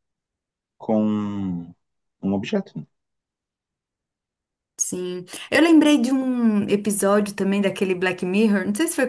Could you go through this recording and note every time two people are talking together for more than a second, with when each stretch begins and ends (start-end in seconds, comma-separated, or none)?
none